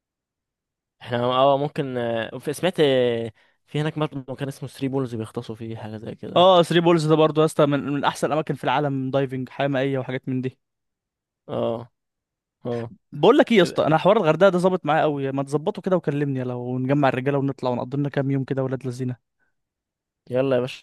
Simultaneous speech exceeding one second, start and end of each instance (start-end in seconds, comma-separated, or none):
none